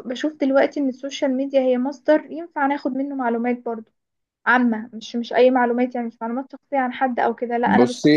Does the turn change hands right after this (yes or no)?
no